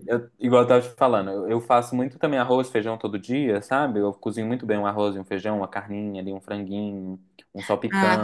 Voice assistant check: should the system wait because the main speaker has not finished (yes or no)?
no